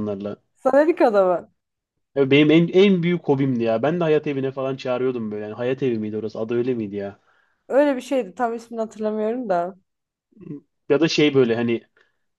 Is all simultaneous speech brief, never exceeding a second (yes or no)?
yes